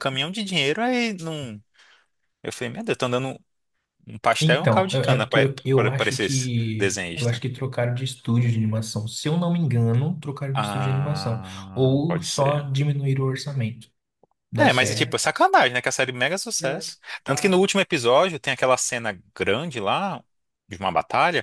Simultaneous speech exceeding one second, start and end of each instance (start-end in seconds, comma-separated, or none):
4.4-7.4, 10.5-12.7